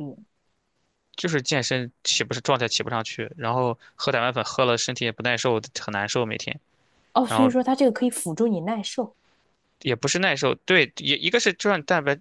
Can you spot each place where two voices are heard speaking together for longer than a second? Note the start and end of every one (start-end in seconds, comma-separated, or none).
none